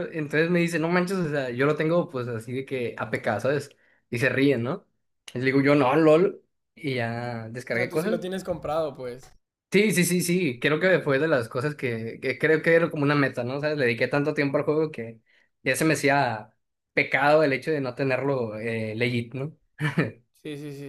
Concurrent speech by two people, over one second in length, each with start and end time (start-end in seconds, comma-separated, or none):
none